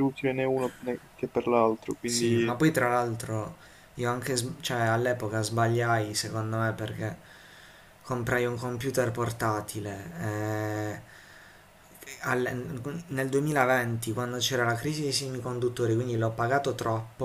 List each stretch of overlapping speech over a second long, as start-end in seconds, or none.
none